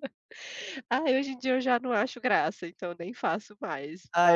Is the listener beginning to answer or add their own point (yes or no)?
yes